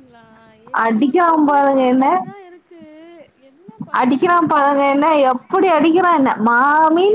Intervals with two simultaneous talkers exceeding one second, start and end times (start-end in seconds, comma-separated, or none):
none